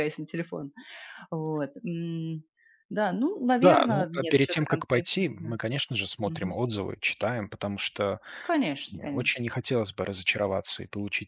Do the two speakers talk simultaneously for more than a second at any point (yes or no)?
yes